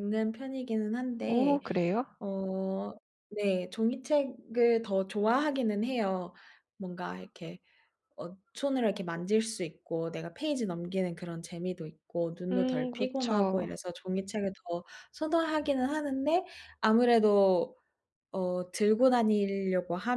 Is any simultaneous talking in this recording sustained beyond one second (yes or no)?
yes